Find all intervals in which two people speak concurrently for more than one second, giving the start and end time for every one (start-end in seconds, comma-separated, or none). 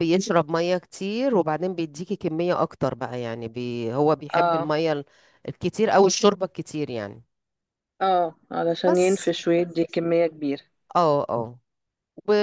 none